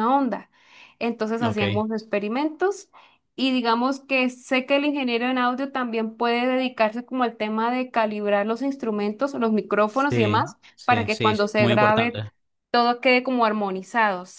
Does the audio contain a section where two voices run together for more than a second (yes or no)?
yes